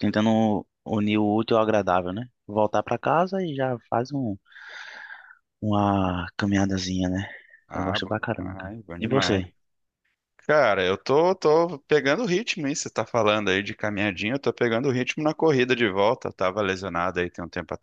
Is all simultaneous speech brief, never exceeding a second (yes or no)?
no